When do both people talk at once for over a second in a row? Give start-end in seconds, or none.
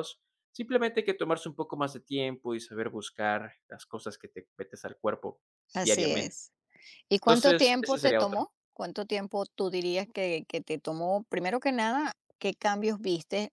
7.2-8.5